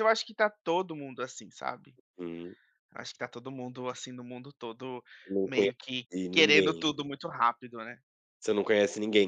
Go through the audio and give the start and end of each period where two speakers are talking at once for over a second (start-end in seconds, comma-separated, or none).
5.4-6.9